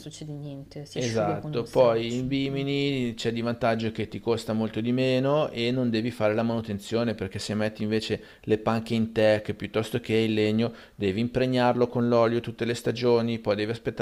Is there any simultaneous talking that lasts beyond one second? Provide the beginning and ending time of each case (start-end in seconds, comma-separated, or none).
1.0-2.6